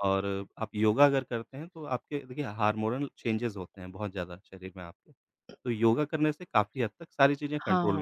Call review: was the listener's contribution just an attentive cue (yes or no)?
no